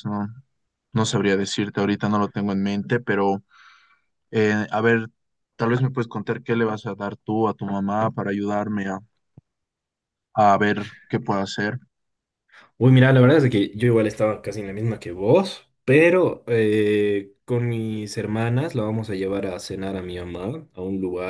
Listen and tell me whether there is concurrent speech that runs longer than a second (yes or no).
no